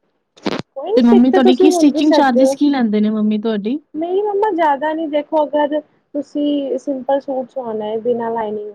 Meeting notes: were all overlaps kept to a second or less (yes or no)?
no